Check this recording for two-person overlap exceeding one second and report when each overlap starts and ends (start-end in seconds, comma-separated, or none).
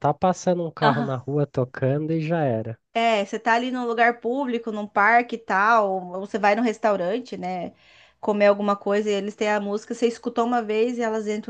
none